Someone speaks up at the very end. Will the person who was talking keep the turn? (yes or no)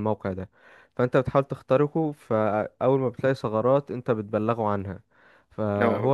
yes